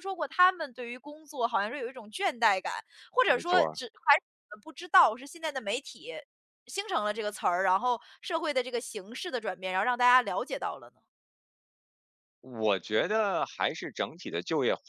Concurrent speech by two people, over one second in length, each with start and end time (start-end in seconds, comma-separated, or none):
none